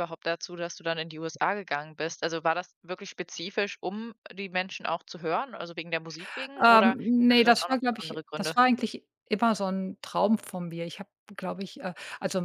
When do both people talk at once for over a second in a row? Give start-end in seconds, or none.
6.6-8.6